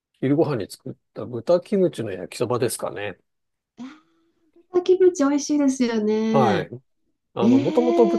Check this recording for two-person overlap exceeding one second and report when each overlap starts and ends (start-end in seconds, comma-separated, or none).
none